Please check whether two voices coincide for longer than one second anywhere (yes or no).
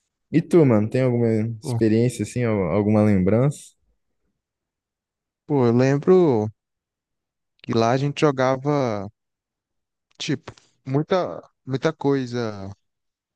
no